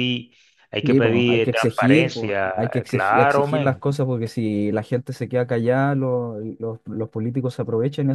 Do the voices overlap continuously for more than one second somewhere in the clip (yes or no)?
yes